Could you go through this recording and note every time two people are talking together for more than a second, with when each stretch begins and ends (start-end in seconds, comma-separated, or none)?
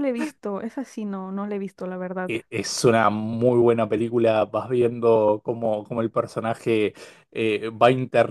none